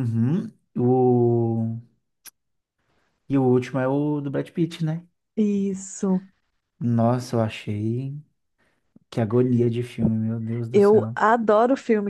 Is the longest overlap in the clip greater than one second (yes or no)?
no